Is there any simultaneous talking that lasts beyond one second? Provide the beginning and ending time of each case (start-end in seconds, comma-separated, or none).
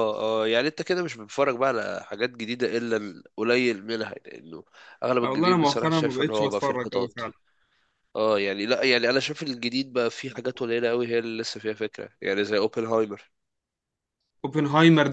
5.2-7.1